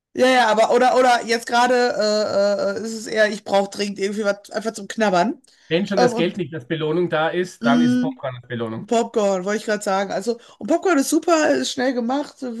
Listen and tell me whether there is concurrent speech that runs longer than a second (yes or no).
no